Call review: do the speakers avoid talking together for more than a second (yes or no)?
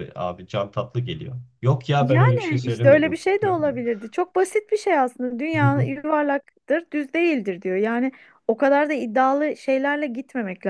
no